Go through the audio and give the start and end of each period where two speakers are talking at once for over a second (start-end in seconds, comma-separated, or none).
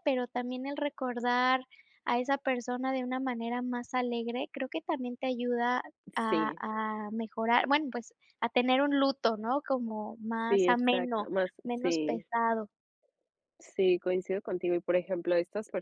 10.5-12.3